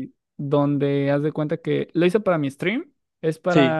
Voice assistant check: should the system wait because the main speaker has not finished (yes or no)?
yes